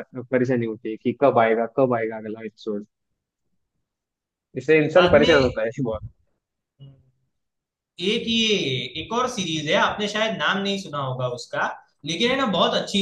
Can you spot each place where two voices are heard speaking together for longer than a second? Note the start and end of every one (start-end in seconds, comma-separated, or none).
none